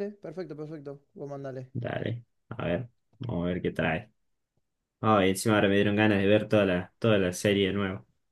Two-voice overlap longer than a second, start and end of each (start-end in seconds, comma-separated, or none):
none